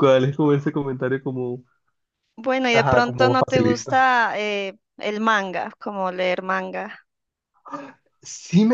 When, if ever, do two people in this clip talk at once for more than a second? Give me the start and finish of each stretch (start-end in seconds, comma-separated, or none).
2.7-4.0